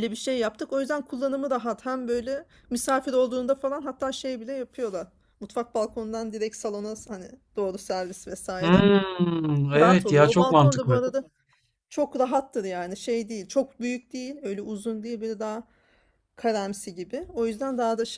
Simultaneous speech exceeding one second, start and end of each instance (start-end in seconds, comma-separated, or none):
9.7-11.0